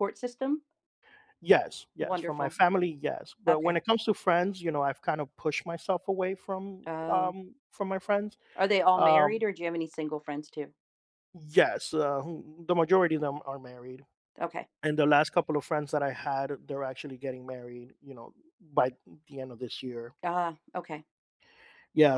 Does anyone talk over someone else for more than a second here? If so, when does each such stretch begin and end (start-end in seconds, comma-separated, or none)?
none